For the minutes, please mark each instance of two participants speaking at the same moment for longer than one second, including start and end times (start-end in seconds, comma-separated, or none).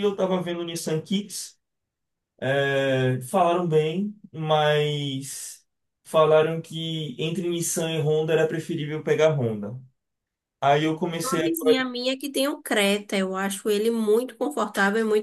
none